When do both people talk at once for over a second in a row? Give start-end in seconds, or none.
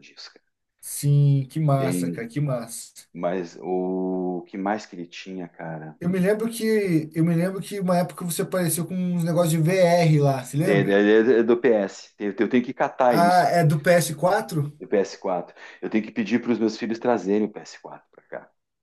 none